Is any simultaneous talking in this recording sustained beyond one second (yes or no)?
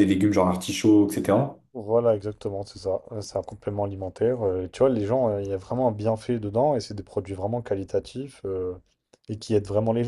no